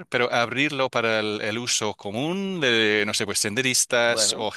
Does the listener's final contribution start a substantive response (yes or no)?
no